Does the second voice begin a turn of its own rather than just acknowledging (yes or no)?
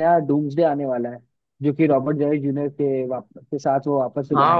yes